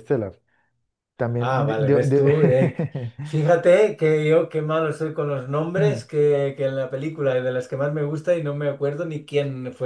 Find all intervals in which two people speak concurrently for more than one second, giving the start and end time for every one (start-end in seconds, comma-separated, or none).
1.4-2.8